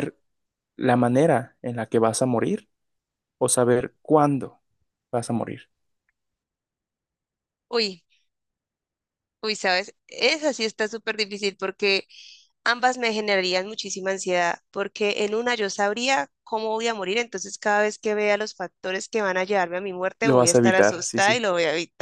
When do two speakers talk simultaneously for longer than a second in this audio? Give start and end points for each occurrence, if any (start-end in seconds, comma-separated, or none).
20.2-21.4